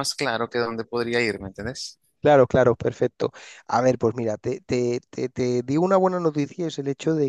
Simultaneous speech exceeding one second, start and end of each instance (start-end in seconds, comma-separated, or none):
none